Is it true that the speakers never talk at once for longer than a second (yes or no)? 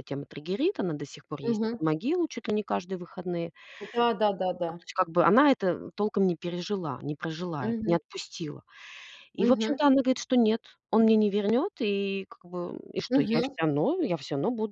yes